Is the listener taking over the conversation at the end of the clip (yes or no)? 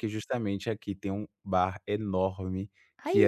no